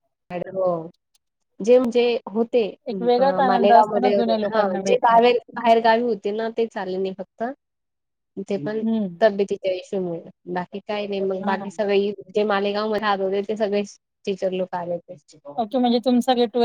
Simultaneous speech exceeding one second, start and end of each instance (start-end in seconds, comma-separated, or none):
3.4-5.3